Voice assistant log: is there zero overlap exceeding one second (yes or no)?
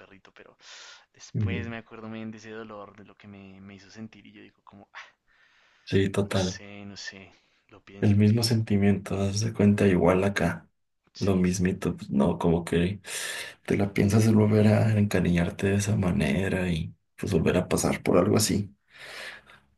yes